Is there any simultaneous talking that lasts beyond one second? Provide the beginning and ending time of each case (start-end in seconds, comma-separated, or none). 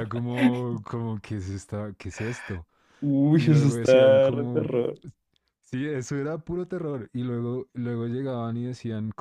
3.4-4.7